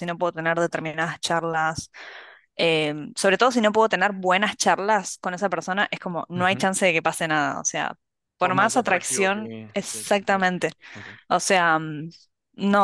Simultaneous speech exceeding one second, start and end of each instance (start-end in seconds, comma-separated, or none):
8.4-10.7